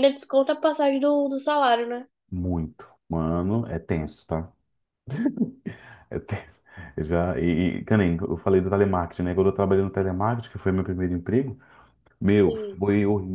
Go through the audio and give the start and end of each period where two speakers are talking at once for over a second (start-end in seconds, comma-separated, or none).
none